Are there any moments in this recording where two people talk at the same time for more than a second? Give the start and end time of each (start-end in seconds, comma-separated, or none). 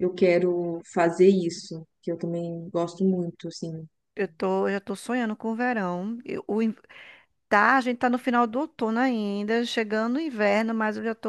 none